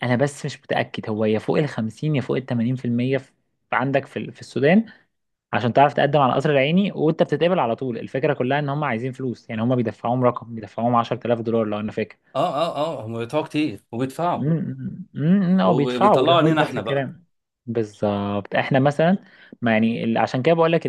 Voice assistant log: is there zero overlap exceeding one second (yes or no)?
no